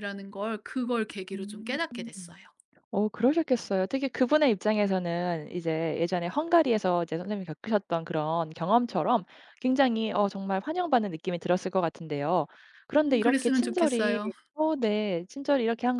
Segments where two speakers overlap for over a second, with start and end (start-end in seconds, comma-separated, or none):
12.9-14.2